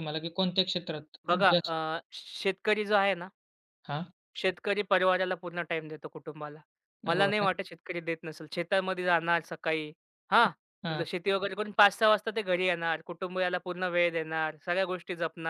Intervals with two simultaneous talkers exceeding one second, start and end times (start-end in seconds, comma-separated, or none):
none